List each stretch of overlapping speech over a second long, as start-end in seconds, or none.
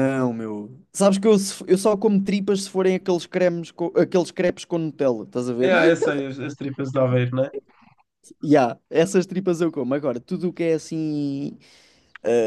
none